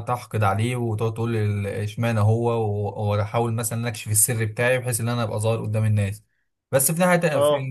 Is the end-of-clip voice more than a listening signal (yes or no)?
no